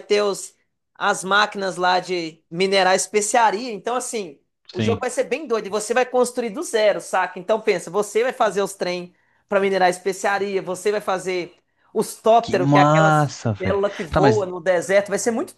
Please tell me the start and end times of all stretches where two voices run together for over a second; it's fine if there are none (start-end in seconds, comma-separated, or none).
12.4-14.5